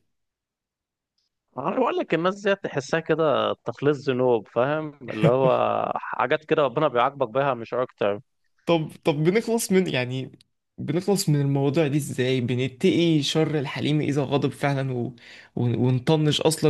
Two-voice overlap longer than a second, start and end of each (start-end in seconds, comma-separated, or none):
none